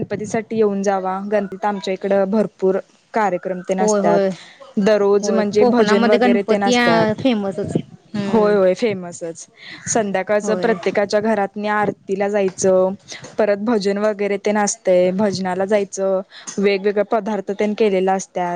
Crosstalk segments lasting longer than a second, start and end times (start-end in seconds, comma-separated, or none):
5.2-6.7